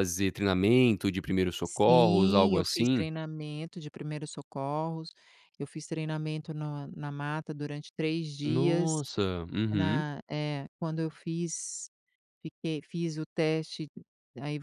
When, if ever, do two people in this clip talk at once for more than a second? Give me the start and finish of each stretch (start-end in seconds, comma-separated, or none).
1.7-3.1